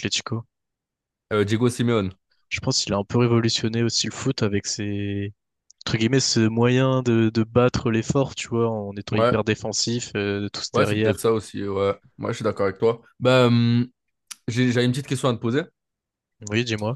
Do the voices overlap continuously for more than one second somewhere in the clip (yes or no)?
no